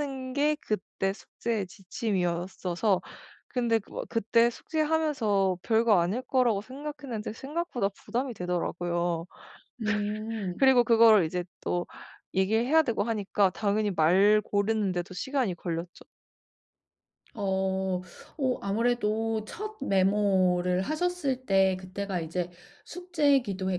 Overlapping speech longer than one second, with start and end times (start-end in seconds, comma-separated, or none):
none